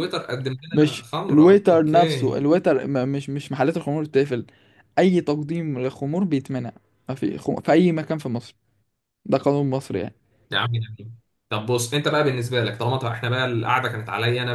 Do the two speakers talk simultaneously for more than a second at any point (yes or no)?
yes